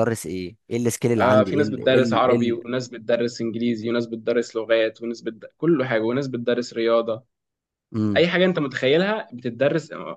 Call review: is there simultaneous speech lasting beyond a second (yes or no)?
yes